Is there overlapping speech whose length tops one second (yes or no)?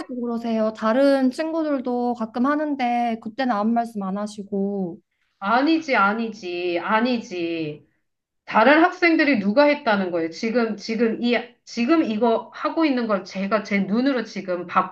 no